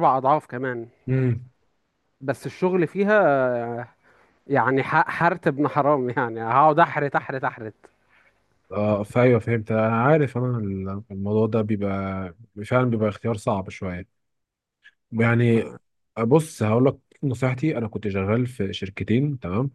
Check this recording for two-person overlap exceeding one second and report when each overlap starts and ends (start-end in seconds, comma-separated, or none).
none